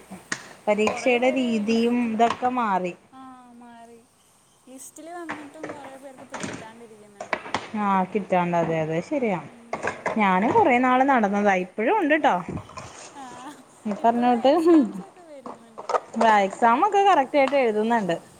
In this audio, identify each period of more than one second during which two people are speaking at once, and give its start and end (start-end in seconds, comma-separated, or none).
none